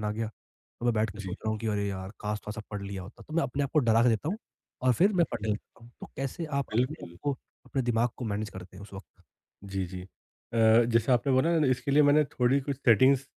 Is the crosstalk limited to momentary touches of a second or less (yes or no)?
yes